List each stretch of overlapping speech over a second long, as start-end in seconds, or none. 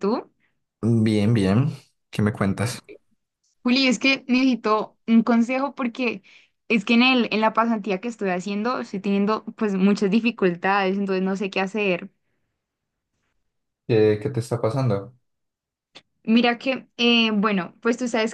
none